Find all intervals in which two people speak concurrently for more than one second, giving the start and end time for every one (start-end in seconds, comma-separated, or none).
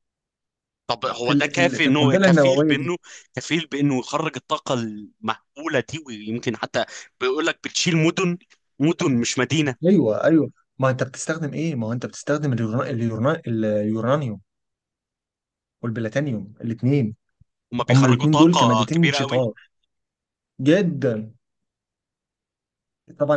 1.2-2.9, 17.9-19.4